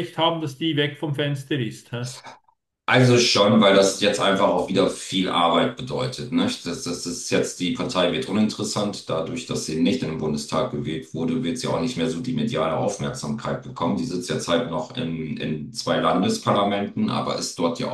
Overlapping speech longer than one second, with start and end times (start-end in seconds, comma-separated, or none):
none